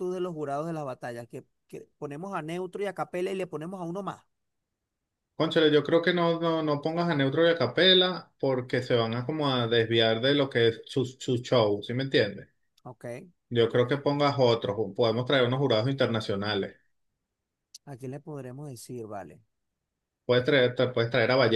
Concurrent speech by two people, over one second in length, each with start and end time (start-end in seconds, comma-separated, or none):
none